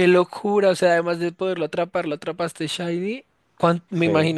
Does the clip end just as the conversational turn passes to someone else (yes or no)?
no